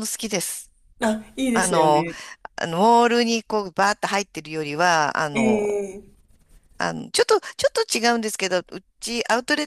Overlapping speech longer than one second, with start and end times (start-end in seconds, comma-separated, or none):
none